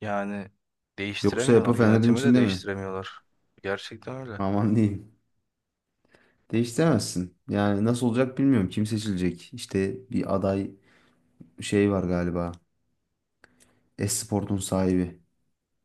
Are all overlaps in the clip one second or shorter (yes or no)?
no